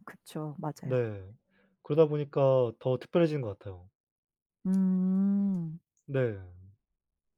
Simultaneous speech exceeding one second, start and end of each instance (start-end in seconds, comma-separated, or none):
none